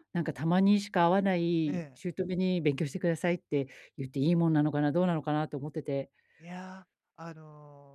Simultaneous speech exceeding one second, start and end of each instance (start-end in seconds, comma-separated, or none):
none